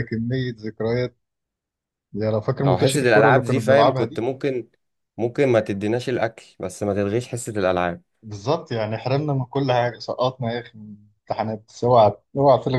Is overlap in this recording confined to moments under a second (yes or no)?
no